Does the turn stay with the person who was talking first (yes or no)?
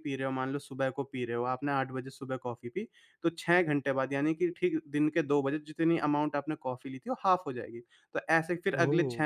yes